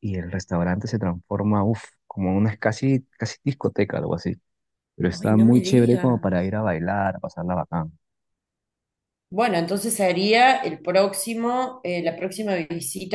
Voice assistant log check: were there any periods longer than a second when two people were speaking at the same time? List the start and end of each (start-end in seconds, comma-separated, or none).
5.1-6.5